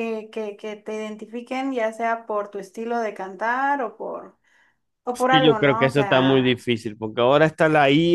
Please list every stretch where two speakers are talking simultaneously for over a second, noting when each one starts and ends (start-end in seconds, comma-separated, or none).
5.1-6.6